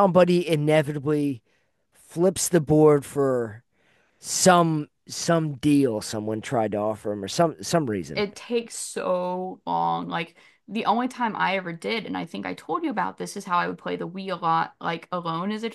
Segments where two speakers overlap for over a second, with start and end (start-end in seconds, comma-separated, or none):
none